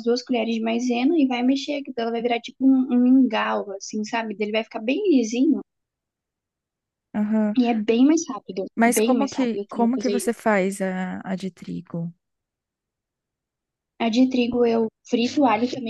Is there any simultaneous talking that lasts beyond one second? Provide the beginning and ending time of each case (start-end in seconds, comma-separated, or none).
8.7-10.4